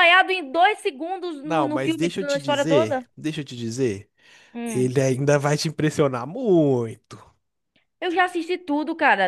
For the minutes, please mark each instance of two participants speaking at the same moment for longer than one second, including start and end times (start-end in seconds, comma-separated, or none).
1.4-3.1